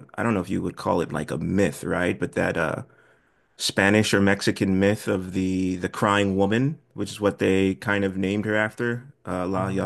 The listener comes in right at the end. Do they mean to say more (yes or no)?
yes